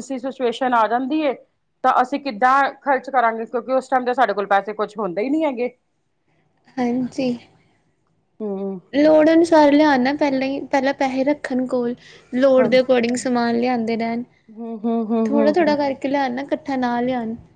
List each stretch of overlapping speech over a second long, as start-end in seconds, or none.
none